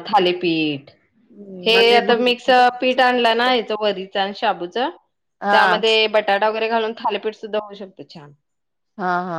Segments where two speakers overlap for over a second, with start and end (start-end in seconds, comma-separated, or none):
none